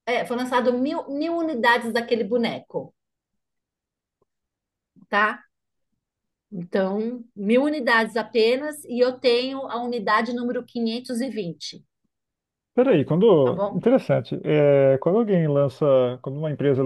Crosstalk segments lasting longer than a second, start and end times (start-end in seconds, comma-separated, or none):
none